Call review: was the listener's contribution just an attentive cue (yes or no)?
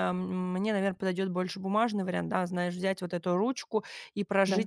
yes